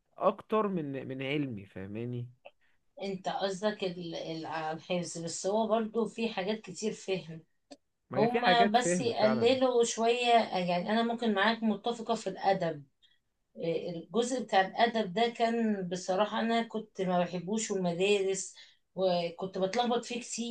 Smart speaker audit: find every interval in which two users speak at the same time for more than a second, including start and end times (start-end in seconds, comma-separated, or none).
8.2-9.6